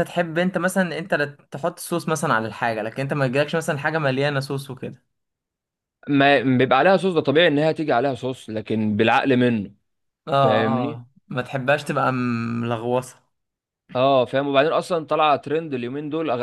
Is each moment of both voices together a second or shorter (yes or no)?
yes